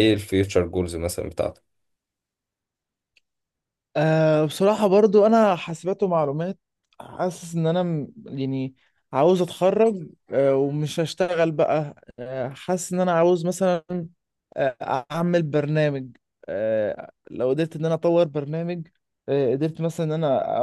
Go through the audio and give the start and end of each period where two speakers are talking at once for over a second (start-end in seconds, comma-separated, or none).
none